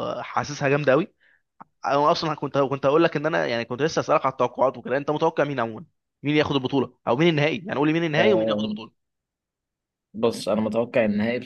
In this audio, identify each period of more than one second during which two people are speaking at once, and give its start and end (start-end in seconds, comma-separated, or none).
none